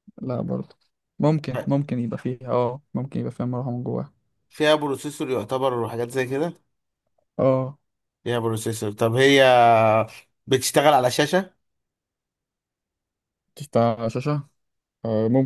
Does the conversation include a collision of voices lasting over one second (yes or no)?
no